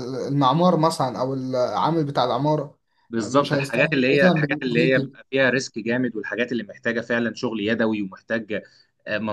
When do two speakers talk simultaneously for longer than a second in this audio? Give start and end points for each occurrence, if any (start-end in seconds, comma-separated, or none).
3.2-5.2